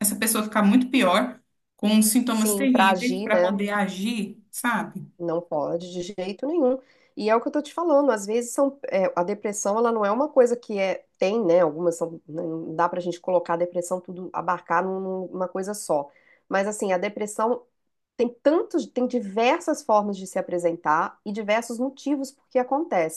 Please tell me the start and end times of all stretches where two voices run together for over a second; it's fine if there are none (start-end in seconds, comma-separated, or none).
2.3-3.6